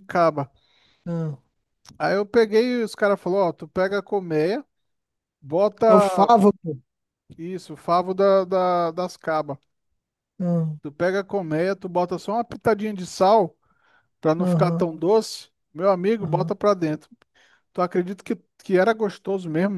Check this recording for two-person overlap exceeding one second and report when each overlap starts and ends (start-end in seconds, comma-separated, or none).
none